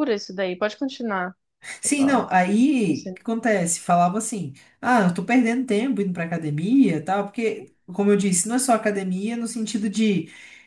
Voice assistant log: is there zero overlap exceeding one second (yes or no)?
yes